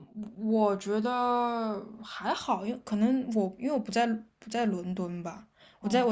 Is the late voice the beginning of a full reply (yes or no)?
no